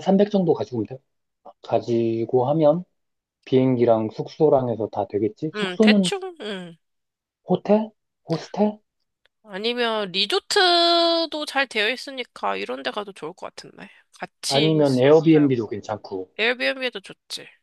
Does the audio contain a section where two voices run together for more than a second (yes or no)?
yes